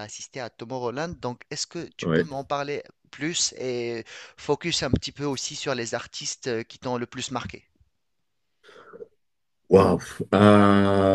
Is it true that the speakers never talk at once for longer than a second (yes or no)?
yes